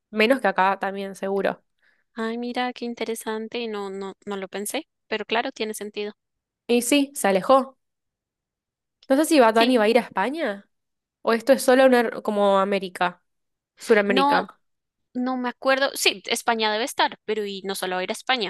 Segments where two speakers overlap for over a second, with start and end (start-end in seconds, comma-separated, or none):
none